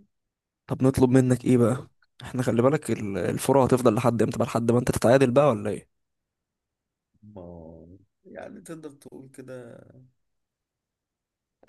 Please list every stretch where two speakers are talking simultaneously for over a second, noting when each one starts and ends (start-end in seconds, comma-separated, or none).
none